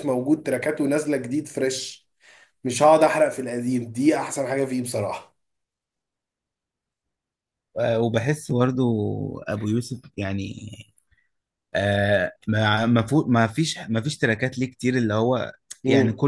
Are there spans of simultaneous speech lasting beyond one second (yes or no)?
no